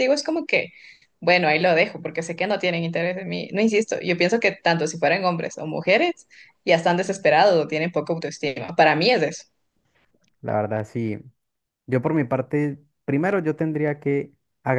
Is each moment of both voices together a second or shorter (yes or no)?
yes